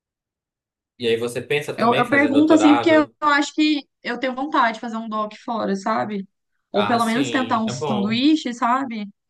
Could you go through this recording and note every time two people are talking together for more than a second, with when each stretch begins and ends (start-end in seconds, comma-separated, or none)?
1.8-3.1, 6.7-8.2